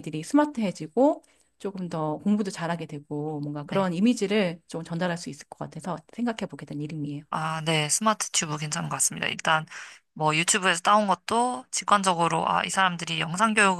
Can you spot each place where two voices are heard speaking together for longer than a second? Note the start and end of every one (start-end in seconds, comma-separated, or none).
none